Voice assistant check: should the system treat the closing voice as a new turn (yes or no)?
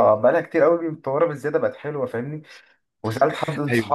no